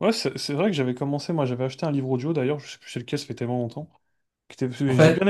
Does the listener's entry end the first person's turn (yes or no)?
no